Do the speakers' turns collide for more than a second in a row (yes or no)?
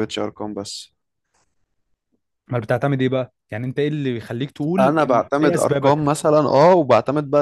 yes